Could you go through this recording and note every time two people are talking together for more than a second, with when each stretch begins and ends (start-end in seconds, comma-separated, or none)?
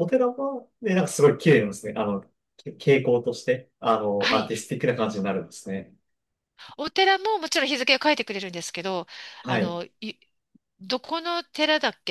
none